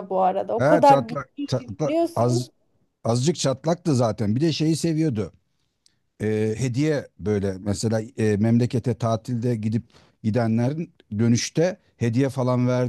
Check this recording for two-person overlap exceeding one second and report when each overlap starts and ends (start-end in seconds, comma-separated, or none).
0.6-2.5